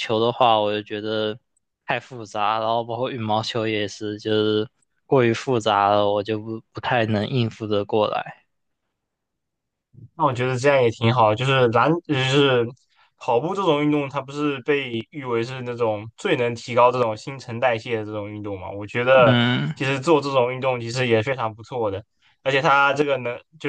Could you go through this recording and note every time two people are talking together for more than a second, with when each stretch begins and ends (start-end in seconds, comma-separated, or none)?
none